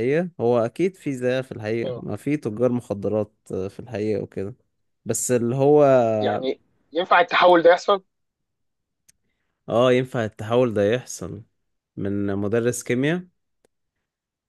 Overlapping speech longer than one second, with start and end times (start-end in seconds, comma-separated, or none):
none